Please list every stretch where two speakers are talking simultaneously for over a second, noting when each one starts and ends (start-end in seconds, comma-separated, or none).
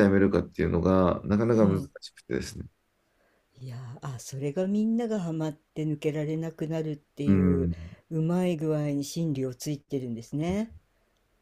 none